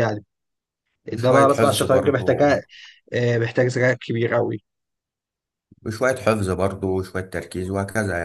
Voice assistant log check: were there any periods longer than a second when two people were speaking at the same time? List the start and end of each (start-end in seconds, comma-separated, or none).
1.1-2.6